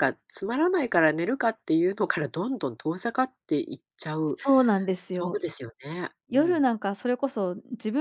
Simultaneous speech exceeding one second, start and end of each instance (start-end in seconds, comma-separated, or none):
none